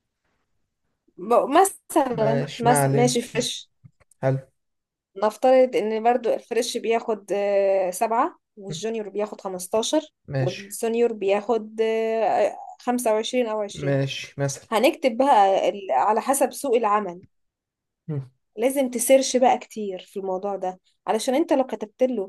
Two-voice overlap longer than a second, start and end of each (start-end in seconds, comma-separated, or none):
2.1-3.5